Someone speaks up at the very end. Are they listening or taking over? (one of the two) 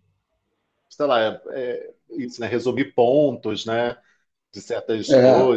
listening